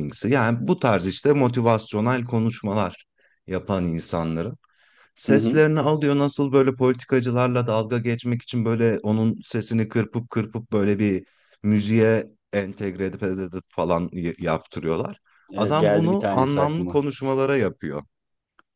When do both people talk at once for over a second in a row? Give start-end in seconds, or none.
15.6-17.1